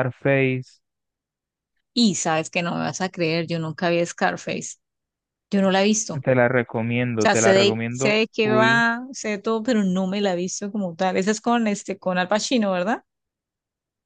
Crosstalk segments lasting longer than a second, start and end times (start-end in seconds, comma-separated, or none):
7.2-8.8